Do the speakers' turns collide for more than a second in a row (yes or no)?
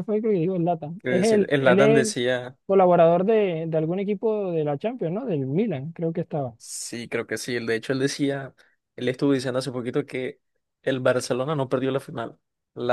yes